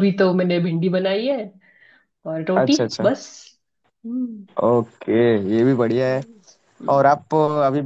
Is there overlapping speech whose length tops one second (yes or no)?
no